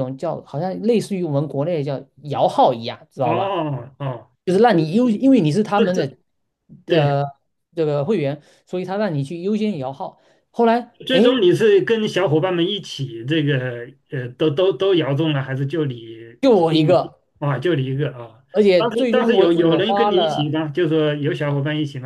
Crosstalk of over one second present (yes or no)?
yes